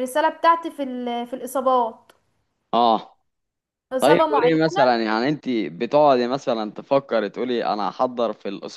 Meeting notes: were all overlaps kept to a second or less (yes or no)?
yes